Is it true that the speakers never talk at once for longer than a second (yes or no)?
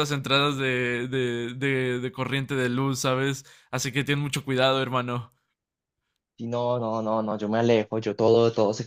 yes